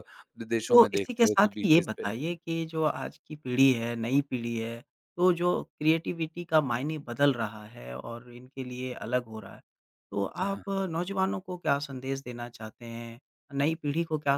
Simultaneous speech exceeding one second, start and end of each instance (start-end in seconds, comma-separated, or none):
0.7-2.4